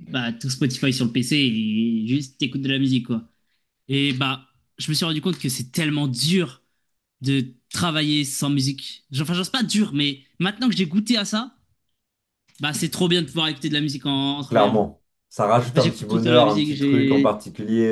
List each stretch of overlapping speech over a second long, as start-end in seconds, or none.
15.7-17.4